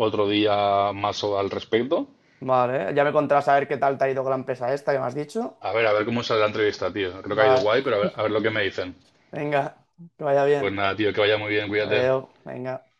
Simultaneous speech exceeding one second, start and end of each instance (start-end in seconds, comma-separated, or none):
none